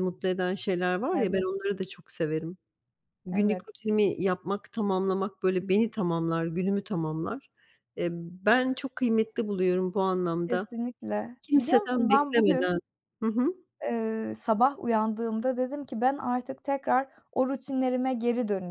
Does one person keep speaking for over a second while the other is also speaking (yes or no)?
yes